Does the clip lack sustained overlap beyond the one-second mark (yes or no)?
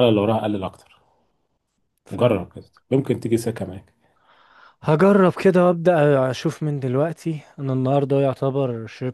yes